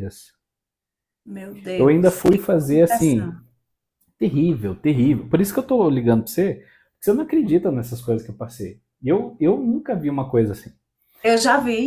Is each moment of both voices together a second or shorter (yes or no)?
no